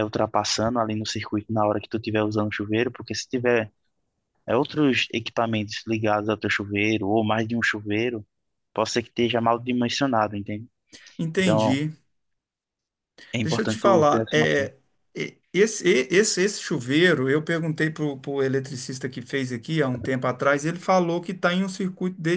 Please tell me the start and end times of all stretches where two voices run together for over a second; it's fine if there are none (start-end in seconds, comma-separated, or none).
13.4-14.7